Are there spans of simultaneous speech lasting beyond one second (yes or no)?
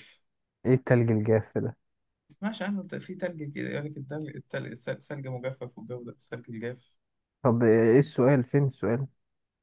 no